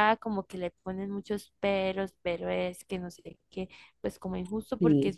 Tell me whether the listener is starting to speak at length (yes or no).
no